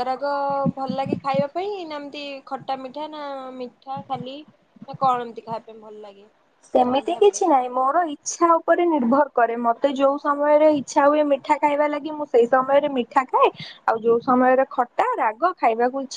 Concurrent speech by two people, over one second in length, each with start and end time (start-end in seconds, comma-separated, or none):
none